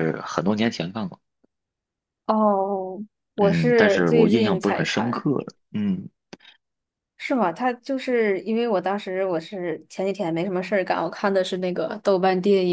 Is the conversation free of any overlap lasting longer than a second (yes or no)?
no